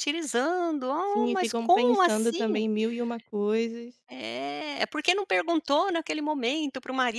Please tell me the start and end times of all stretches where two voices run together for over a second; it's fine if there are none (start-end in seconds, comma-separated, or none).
1.0-2.6